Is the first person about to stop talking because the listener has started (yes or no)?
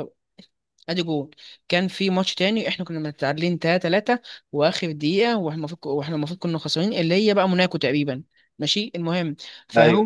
no